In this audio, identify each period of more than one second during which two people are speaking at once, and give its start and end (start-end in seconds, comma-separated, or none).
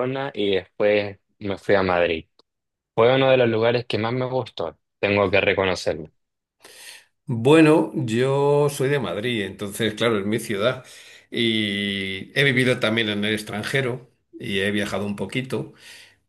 none